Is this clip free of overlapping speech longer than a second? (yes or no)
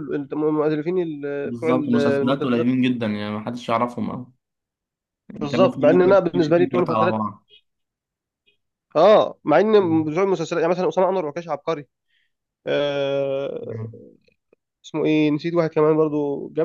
no